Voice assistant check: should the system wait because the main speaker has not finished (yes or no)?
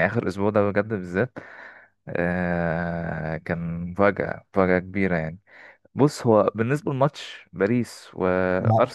yes